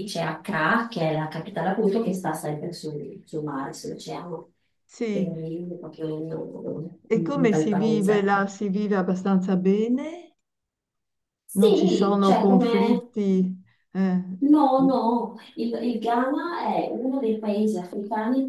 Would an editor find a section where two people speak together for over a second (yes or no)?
yes